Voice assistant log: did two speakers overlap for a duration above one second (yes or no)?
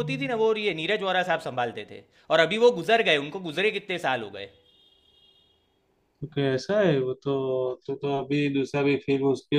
no